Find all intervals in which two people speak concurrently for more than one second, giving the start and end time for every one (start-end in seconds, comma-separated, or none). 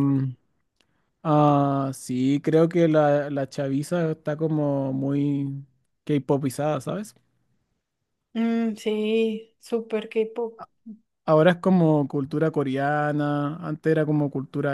none